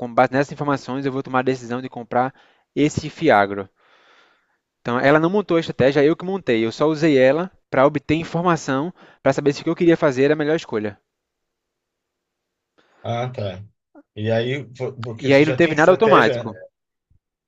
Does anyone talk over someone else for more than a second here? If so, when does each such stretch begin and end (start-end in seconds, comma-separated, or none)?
15.2-16.4